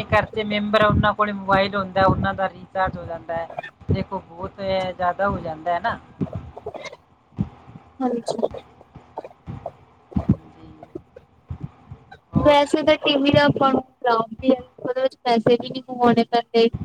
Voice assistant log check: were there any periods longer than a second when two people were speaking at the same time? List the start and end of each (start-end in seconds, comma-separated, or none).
none